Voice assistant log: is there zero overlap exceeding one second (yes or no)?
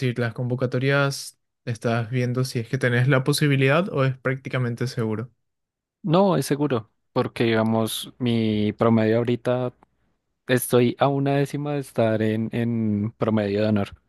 yes